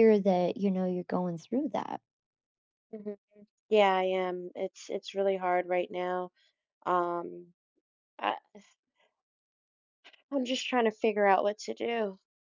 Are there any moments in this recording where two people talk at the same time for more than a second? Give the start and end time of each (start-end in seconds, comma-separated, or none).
none